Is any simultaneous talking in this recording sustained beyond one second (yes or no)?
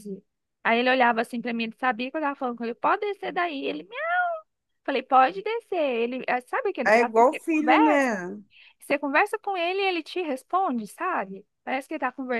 yes